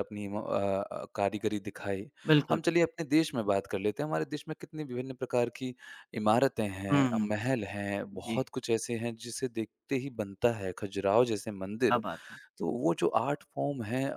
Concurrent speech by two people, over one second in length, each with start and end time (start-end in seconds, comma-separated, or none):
none